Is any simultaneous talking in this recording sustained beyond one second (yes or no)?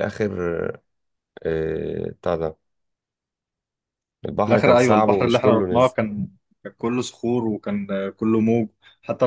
yes